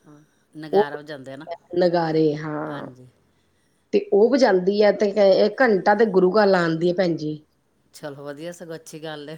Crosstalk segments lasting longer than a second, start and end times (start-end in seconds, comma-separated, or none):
none